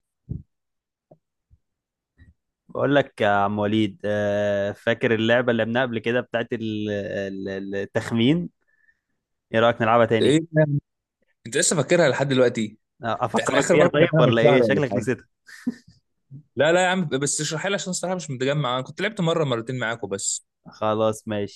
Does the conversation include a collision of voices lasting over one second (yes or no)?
yes